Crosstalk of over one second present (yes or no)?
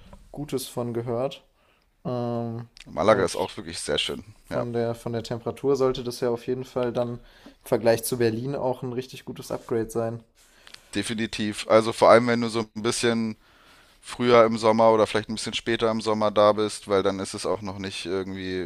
no